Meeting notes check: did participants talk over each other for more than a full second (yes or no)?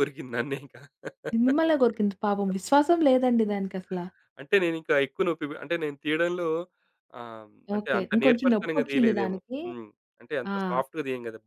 yes